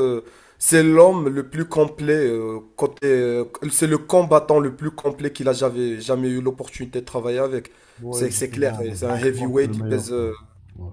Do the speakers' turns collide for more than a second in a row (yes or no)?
yes